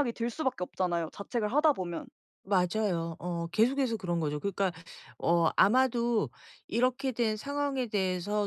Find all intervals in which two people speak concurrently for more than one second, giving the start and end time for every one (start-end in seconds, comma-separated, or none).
none